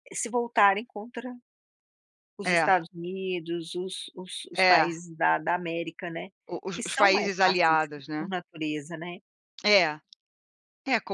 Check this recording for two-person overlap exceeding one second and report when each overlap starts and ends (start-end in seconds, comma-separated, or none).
6.7-8.2